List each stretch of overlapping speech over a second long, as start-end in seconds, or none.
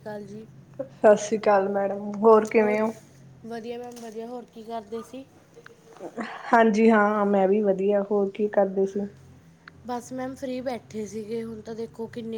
none